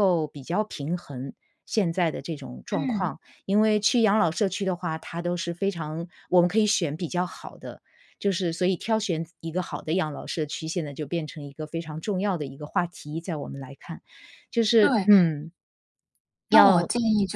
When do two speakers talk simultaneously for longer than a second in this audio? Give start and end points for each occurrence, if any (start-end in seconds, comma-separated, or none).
none